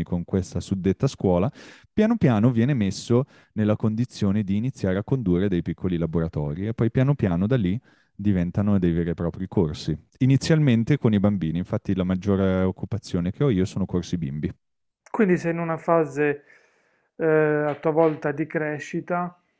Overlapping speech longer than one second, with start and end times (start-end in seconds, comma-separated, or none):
none